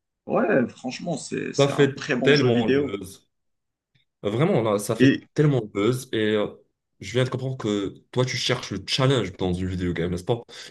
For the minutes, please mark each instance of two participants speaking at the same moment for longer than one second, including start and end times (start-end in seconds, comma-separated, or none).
1.6-3.0